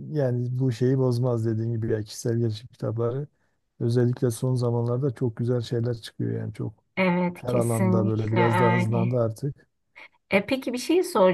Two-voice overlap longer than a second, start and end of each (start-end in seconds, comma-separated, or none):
7.3-9.1